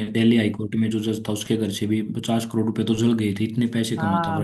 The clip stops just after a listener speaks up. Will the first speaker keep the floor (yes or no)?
no